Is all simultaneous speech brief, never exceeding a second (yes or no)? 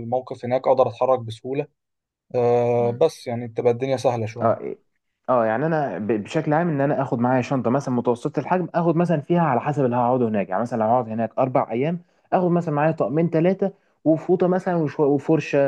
yes